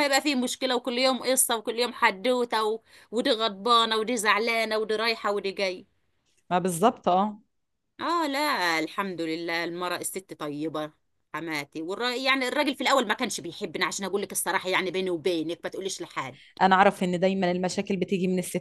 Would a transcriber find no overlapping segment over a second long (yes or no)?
yes